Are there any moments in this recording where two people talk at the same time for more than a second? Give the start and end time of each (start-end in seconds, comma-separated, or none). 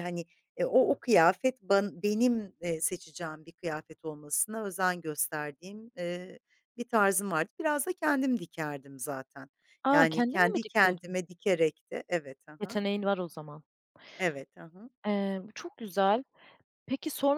9.9-11.2